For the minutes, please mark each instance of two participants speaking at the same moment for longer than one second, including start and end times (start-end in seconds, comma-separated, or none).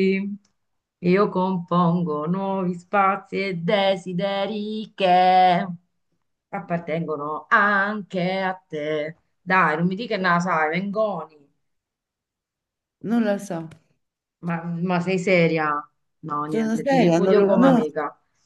16.4-17.9